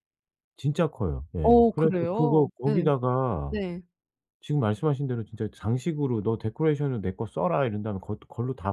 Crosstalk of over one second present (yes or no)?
yes